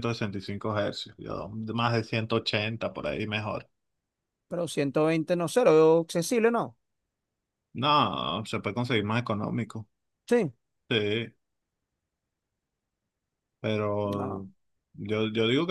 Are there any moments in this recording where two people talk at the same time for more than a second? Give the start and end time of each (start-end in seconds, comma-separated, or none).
none